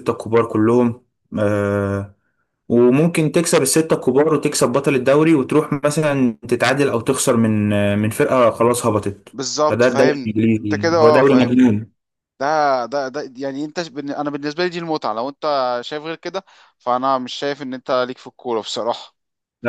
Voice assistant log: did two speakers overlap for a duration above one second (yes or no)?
yes